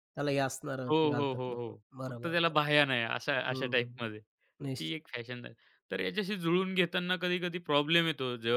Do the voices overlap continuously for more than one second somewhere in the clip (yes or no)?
yes